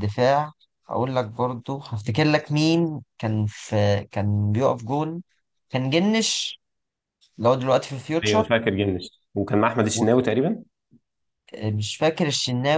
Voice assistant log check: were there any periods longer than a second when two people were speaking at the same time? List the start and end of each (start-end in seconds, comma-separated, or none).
none